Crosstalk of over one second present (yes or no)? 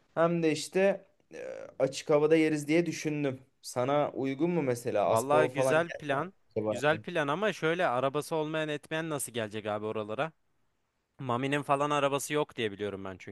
yes